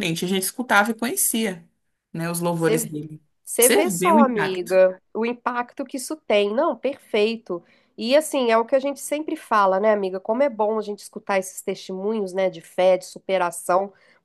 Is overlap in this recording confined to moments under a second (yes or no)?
no